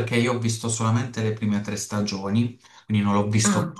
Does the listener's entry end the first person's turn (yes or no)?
no